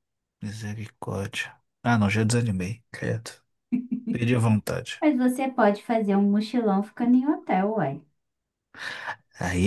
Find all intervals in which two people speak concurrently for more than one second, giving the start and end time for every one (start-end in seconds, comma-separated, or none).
none